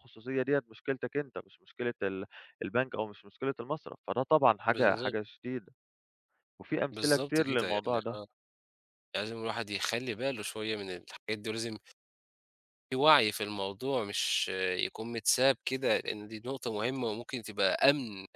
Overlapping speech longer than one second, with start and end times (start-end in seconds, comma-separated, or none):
6.9-8.2